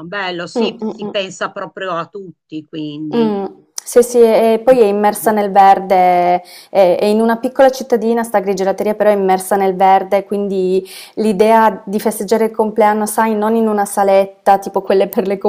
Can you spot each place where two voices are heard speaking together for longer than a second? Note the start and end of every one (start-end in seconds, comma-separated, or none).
none